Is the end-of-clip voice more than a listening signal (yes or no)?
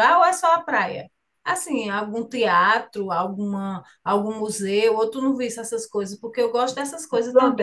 yes